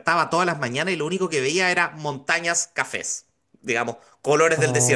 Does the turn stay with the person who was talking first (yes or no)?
no